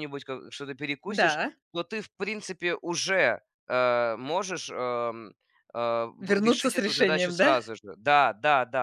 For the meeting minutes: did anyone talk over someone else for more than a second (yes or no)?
yes